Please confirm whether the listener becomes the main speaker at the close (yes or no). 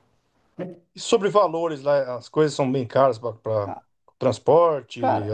yes